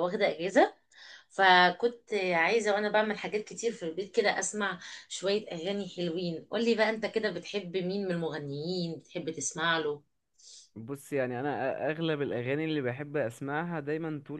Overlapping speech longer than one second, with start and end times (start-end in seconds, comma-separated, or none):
none